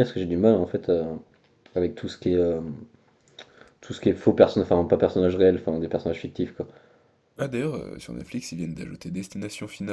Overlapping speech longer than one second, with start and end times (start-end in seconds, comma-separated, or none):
none